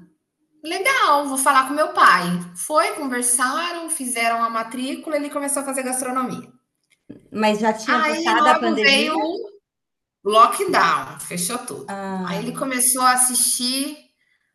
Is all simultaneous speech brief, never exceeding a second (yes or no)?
no